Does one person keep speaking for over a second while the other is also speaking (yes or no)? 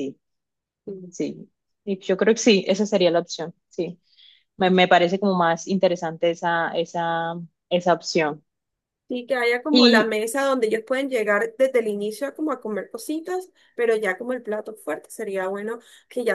no